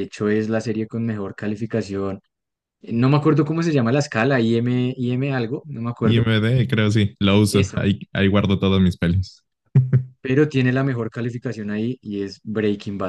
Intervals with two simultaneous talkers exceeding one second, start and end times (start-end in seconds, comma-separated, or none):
none